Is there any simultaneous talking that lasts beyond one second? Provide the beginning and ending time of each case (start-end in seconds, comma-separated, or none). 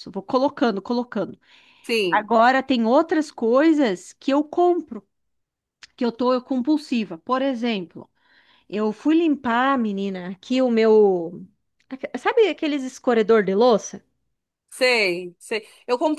none